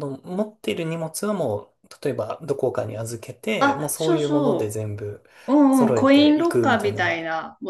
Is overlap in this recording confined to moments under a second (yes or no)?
no